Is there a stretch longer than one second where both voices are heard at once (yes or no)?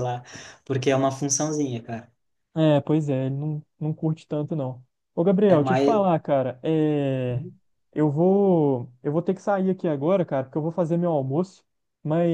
no